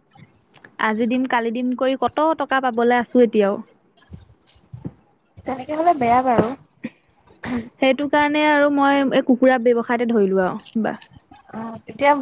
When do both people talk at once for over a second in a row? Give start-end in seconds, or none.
none